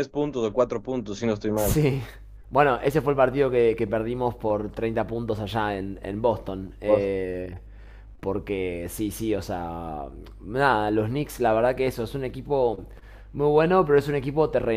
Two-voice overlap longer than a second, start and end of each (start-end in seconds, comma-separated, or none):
none